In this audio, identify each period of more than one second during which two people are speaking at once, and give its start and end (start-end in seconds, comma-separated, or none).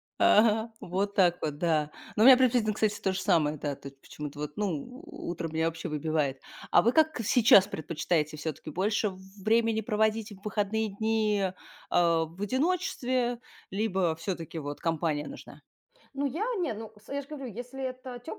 none